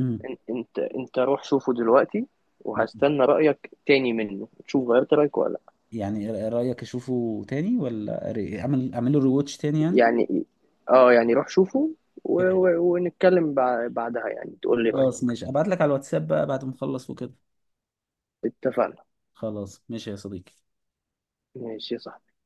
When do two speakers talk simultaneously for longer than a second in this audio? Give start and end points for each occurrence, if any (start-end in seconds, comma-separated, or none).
none